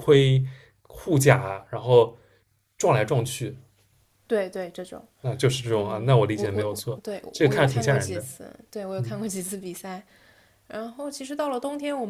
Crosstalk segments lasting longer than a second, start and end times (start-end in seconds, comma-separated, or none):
5.7-8.2